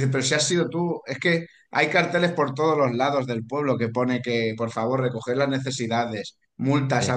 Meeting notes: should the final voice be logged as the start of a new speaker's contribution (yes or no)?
no